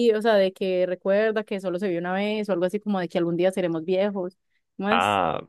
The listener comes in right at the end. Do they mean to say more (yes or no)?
yes